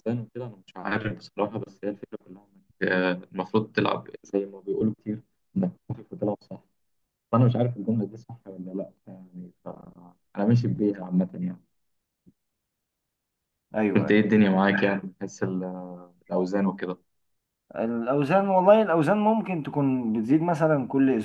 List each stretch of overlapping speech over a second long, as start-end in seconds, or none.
none